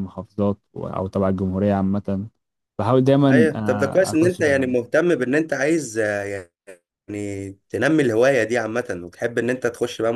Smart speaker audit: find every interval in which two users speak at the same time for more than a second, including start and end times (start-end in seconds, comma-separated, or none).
3.3-4.7